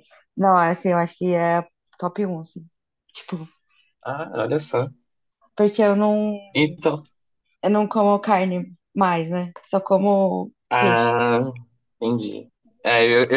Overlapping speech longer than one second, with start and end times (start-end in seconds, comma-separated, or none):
none